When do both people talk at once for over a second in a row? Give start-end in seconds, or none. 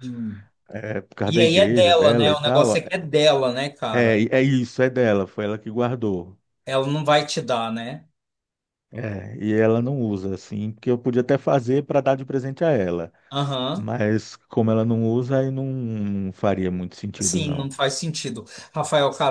1.2-2.7